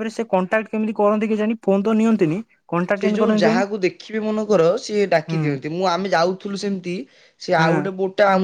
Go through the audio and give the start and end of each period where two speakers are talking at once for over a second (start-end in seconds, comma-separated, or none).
none